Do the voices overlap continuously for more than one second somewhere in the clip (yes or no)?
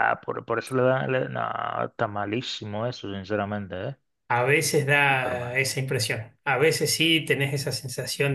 no